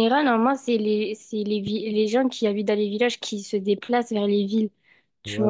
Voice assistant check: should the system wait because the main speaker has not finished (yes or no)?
no